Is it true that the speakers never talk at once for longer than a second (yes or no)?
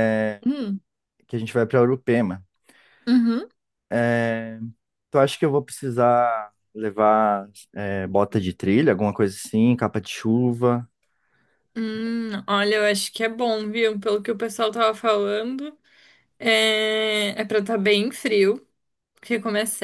yes